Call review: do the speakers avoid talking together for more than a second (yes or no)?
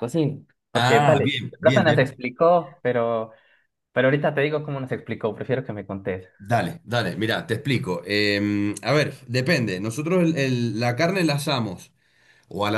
no